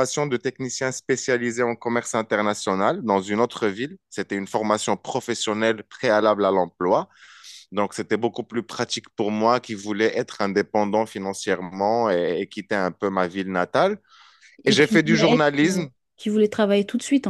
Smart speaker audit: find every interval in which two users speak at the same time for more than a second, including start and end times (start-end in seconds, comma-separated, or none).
14.6-15.8